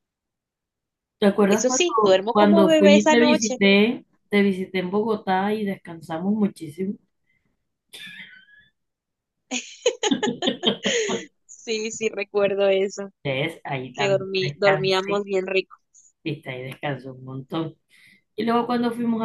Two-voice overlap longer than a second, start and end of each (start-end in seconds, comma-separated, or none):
1.5-3.6, 13.9-15.2